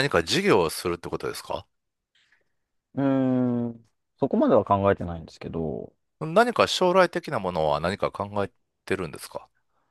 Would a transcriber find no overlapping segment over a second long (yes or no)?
yes